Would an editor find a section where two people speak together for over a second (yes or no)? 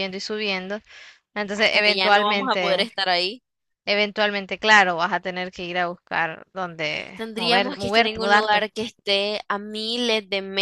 yes